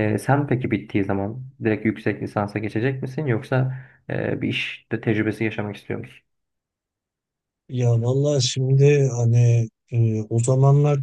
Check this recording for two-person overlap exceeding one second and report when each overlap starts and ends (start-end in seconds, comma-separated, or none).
none